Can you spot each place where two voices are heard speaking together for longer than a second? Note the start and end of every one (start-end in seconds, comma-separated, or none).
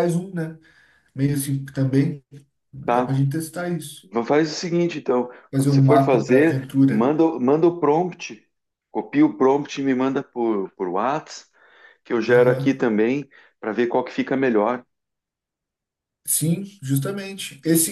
5.5-7.1